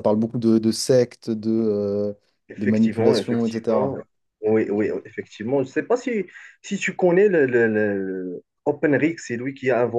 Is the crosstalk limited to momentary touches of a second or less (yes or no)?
no